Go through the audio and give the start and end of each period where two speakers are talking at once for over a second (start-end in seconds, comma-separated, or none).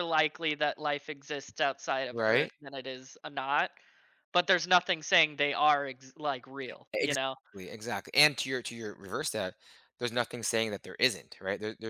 none